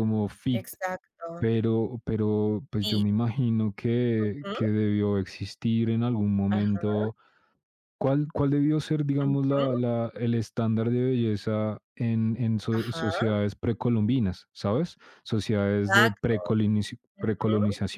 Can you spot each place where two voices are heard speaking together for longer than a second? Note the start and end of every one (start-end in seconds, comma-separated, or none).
none